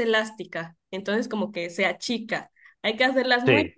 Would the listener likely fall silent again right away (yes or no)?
yes